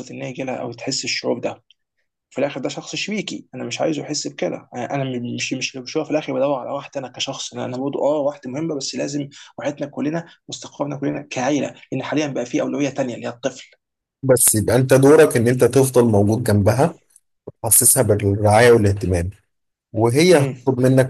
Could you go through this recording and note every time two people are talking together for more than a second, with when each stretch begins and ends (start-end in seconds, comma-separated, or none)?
none